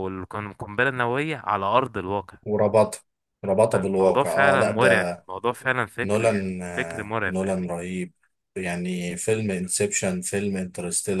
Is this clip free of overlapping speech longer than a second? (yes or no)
no